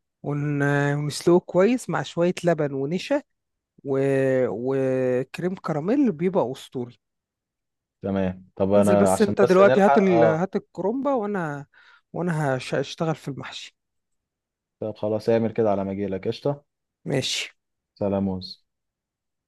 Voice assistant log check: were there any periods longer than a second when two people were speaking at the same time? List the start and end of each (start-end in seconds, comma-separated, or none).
8.8-10.4